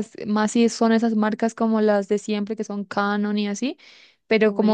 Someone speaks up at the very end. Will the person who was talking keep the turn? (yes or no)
yes